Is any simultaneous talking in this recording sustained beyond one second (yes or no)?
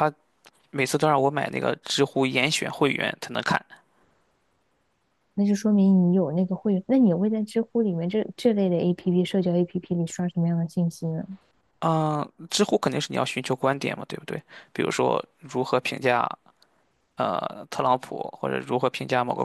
no